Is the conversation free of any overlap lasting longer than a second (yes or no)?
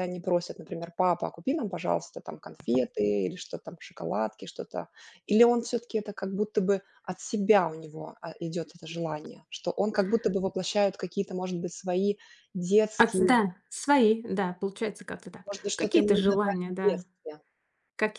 no